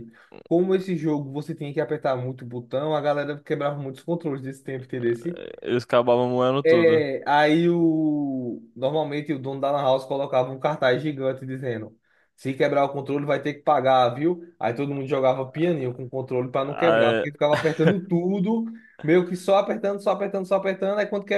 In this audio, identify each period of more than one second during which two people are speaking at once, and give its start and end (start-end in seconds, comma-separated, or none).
none